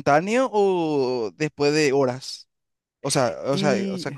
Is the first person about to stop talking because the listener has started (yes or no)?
no